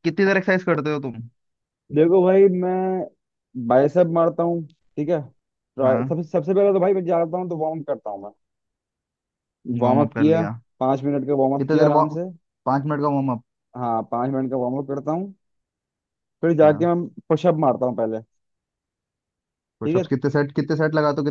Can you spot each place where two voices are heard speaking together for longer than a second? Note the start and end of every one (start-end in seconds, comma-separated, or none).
none